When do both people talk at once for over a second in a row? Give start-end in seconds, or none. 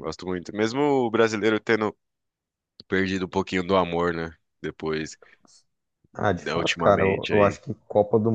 6.4-7.6